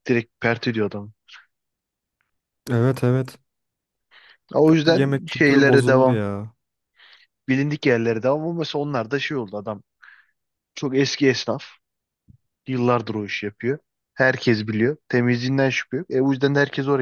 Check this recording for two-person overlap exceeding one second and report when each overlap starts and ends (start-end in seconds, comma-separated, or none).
4.8-6.2